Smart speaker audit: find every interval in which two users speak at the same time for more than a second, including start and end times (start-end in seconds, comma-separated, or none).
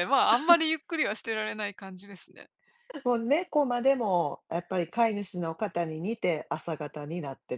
none